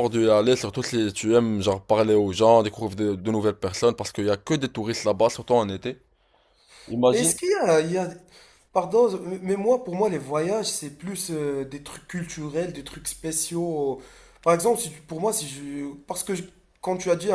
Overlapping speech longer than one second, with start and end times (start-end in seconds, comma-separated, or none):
none